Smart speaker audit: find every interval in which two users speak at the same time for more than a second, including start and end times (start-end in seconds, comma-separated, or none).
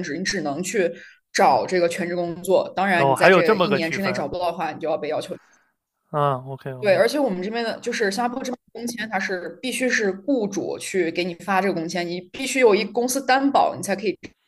3.0-4.2